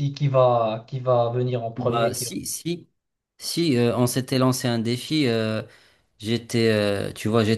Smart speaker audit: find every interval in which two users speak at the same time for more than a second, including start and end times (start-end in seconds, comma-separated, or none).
none